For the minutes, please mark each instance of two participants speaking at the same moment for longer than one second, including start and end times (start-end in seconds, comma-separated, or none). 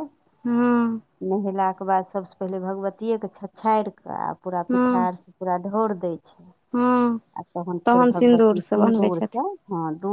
8.2-9.4